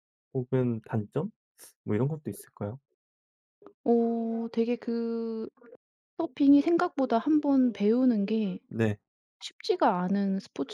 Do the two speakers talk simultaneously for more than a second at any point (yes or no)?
no